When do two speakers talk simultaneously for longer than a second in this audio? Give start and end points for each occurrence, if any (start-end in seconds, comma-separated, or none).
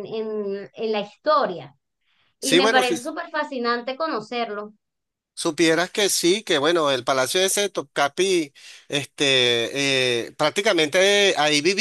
none